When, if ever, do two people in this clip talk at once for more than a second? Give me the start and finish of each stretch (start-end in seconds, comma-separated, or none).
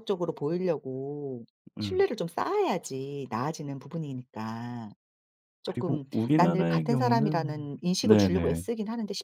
5.6-8.6